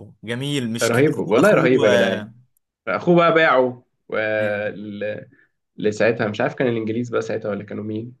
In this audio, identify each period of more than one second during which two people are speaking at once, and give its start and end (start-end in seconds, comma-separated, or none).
0.8-2.3